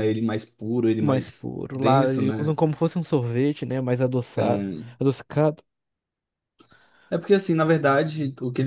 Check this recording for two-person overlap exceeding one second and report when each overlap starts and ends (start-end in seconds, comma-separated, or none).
1.0-2.6